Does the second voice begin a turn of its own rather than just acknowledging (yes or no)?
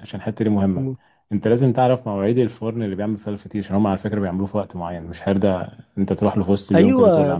yes